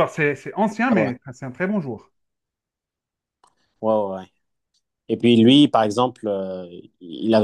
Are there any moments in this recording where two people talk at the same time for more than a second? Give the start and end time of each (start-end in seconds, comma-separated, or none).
none